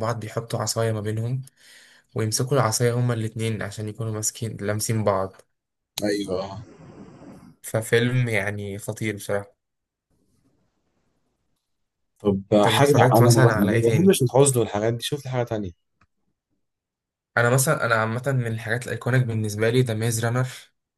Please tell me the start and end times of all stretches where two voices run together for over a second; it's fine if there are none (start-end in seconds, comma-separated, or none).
12.6-14.2